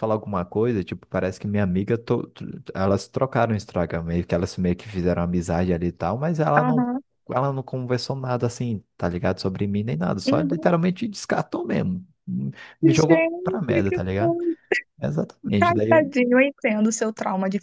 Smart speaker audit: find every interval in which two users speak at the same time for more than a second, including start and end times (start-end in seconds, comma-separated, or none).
12.8-14.4